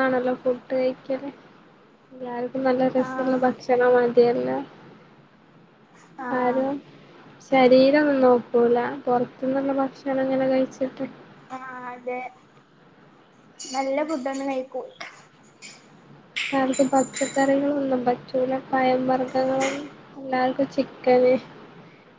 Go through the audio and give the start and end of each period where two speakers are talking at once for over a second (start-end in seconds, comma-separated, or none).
none